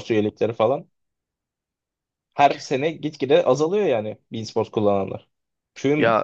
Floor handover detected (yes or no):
no